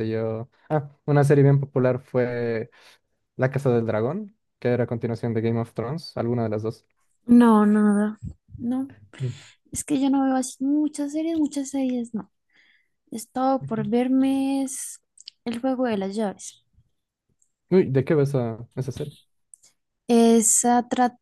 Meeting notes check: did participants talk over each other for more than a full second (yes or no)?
no